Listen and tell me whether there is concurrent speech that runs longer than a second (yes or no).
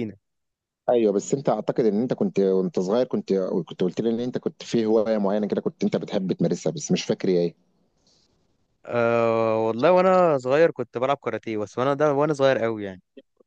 no